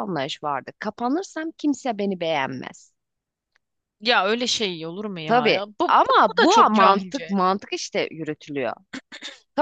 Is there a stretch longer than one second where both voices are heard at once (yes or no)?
yes